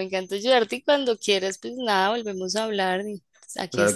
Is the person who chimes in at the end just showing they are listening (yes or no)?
no